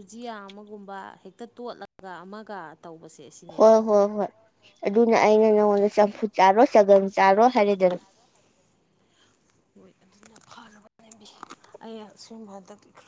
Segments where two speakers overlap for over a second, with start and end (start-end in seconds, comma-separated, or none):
none